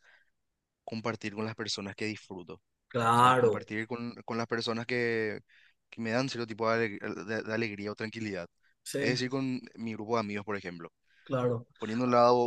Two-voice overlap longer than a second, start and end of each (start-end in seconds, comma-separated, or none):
none